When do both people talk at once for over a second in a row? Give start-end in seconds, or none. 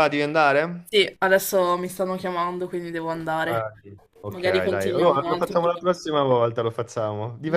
4.3-6.0